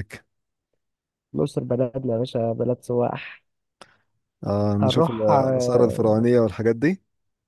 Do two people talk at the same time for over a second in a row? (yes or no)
yes